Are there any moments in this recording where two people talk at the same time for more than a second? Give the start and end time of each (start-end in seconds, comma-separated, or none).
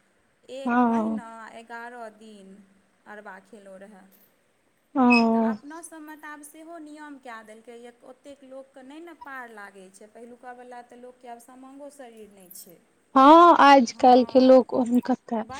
none